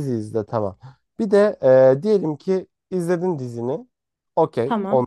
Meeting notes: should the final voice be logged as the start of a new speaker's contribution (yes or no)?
no